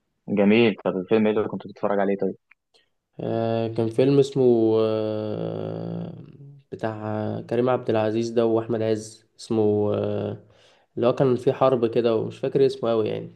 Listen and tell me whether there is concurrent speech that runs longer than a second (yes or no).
no